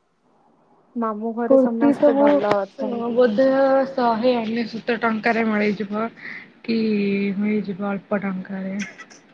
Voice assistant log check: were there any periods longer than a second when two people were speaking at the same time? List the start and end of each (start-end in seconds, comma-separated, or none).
1.5-3.1